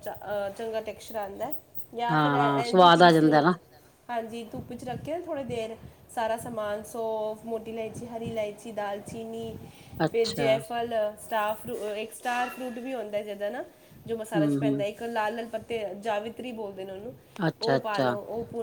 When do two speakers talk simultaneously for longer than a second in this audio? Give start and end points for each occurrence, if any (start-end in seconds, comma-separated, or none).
2.1-3.4